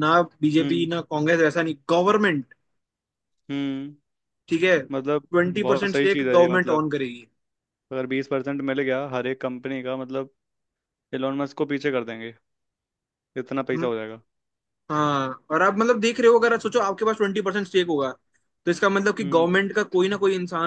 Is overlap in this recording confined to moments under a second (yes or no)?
no